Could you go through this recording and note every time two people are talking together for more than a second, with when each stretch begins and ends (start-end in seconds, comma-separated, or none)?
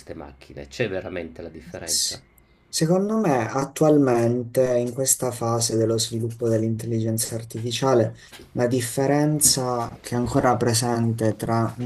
none